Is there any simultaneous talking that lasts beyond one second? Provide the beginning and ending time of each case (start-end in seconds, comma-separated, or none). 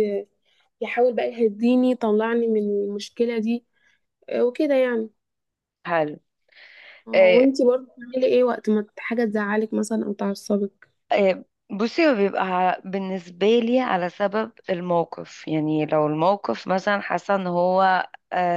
none